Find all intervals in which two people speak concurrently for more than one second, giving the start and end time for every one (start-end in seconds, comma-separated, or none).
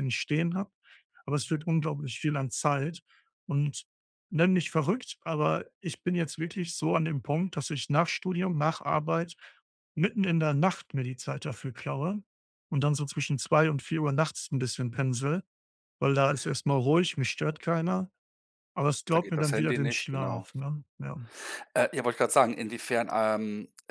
19.1-20.5